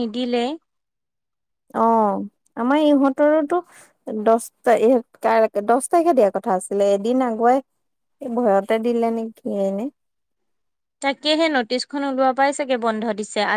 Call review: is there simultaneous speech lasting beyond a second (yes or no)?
no